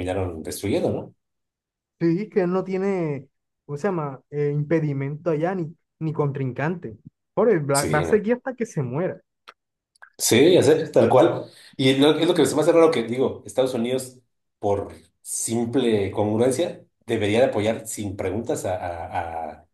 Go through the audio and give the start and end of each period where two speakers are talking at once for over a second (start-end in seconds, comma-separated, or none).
none